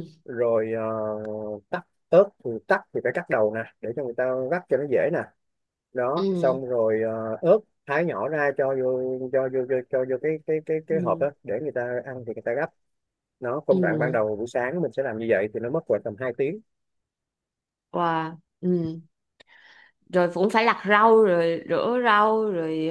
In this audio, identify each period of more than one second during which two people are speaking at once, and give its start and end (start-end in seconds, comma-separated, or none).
none